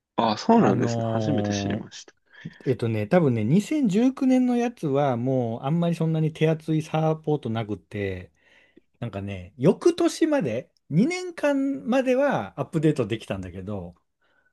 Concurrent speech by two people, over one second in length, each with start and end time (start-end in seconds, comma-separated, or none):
0.5-1.9